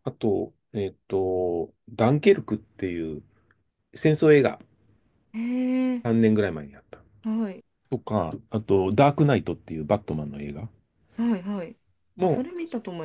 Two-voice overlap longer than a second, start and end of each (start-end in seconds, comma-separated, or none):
none